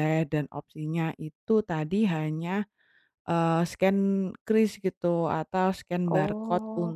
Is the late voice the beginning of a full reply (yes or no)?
no